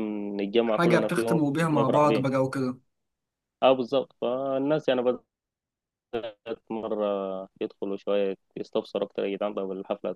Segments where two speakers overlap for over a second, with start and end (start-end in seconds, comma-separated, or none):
0.7-2.3